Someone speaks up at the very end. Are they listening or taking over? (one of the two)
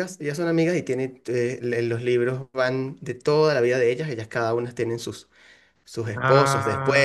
listening